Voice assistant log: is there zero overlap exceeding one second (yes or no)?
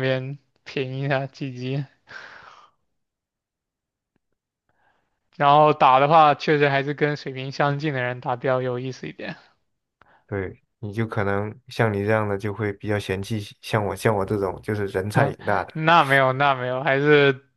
yes